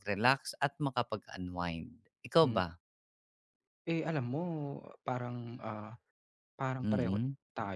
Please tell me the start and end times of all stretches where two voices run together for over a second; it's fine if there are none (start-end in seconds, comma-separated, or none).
none